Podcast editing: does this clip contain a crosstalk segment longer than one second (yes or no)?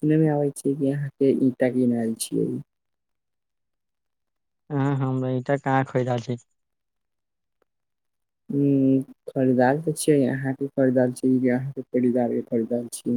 no